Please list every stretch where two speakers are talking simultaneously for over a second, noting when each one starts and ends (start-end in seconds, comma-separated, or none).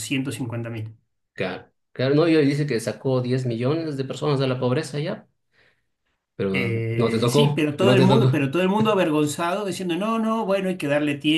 7.0-8.3